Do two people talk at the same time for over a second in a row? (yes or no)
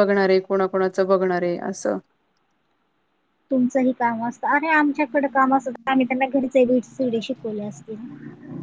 no